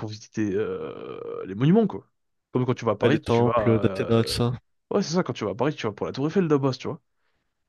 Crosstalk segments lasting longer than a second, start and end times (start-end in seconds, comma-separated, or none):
3.0-4.4